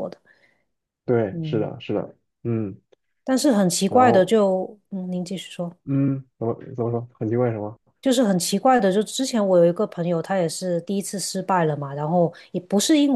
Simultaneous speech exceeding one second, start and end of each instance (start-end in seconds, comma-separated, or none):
none